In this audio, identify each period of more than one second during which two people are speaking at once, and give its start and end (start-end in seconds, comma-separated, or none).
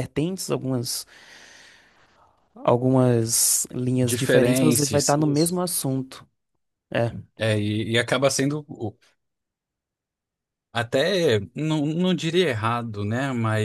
4.0-5.5